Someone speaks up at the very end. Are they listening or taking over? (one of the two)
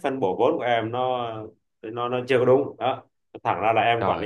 listening